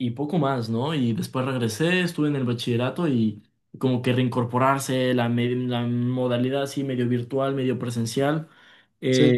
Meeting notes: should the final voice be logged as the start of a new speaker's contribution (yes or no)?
no